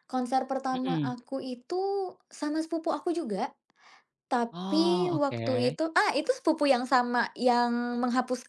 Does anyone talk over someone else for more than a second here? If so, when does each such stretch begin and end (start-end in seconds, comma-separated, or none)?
4.5-5.8